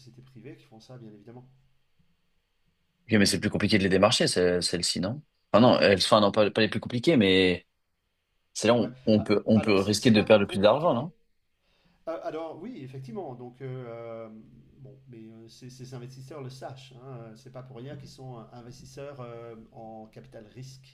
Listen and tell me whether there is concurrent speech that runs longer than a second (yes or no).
yes